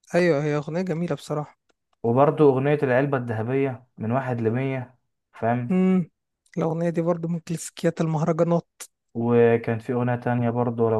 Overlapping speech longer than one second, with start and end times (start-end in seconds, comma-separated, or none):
none